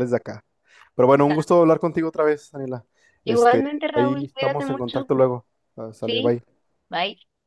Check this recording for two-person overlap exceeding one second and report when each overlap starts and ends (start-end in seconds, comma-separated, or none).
3.2-5.1